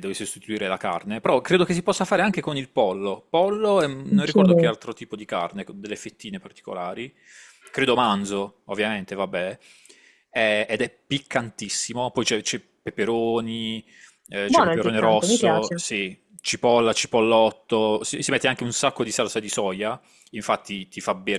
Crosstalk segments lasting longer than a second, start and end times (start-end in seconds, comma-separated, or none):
14.4-15.8